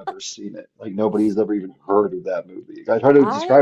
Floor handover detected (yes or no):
no